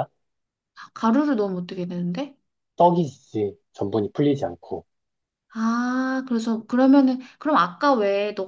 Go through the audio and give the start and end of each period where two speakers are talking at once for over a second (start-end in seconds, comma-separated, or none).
none